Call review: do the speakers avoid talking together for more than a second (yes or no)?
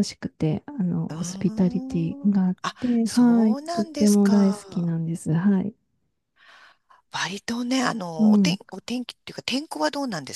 no